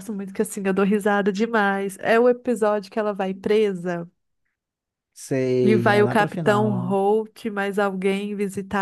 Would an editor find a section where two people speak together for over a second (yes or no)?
yes